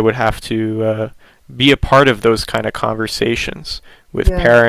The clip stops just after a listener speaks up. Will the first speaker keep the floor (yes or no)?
yes